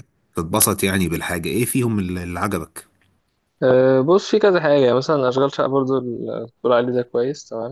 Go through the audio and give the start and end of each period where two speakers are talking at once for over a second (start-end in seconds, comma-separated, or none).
none